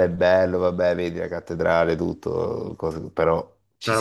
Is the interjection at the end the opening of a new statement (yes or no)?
yes